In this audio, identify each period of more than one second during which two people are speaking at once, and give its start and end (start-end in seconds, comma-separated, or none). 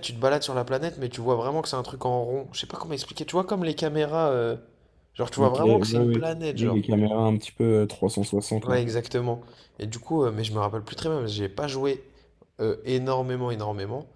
5.4-6.8